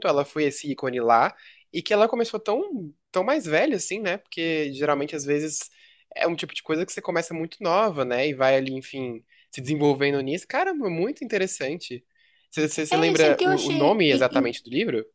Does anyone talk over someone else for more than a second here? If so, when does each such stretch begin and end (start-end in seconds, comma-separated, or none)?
12.9-14.6